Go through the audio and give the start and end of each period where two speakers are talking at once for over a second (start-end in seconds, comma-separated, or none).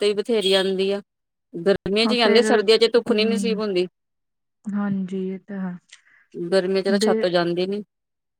2.0-3.6